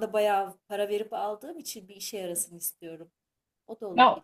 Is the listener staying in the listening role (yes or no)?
no